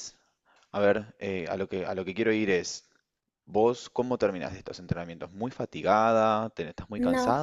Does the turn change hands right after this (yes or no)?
no